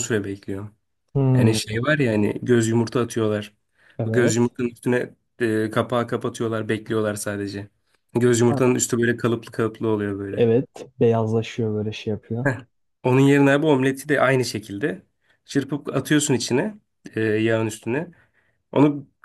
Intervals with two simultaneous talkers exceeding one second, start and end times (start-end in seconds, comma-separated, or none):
none